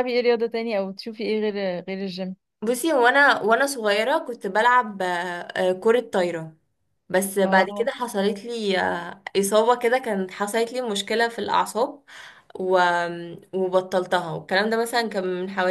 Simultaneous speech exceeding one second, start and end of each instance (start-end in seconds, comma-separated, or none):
none